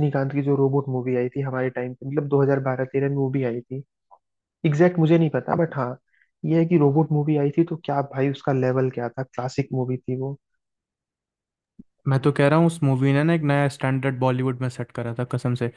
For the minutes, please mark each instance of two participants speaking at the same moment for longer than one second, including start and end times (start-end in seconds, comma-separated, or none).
none